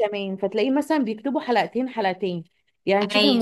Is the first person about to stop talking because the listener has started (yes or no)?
no